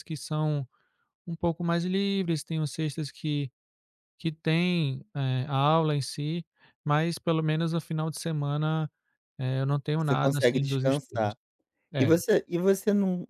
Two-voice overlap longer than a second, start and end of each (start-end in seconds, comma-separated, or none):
10.0-11.3